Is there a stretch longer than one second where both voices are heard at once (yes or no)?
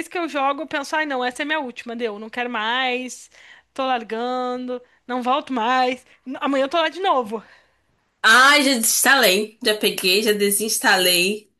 no